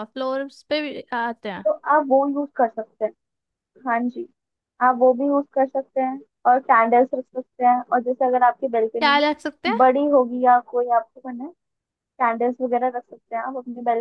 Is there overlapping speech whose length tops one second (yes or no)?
no